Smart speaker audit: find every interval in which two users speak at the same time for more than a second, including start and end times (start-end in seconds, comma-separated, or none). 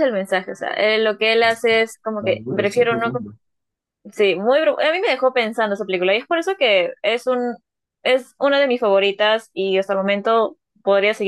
1.2-3.1